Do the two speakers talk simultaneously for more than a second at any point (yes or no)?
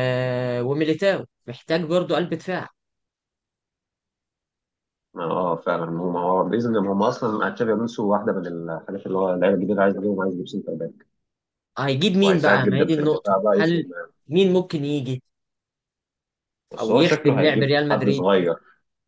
yes